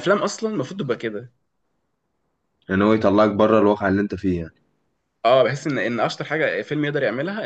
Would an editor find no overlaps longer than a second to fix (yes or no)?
yes